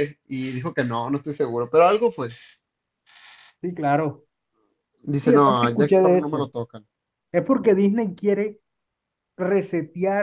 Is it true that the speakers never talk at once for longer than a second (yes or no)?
no